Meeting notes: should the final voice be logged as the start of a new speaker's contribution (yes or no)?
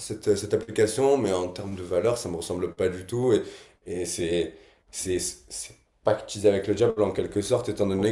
no